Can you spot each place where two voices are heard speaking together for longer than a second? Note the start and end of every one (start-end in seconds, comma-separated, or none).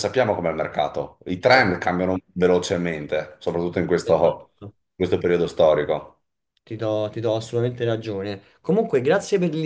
none